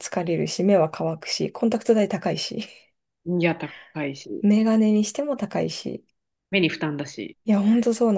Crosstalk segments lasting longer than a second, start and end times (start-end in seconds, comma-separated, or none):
none